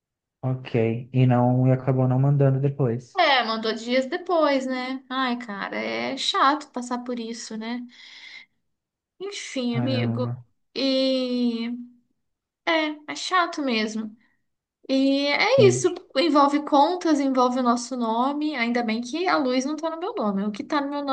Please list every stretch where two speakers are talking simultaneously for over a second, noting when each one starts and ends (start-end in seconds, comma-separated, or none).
none